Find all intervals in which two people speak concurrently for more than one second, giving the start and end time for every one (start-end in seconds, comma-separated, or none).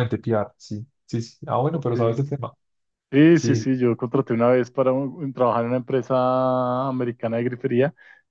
none